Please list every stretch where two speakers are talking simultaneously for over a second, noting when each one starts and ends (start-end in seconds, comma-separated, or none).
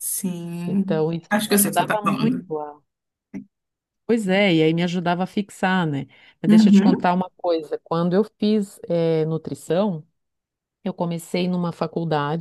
0.7-2.5